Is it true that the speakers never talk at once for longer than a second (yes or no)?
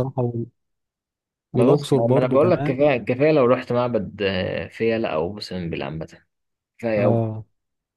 no